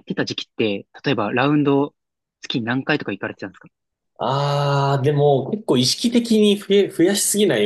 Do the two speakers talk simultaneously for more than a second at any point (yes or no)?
no